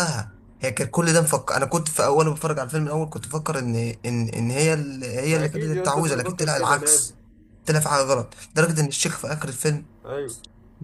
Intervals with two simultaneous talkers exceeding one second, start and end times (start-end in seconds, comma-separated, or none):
5.3-7.1